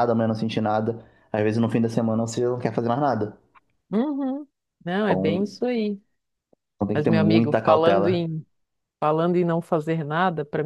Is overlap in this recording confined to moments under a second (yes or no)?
no